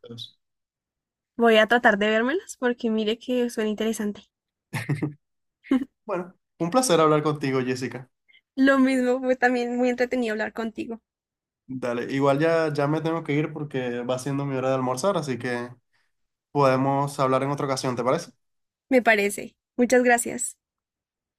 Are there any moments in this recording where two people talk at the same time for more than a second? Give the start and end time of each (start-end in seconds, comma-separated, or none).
none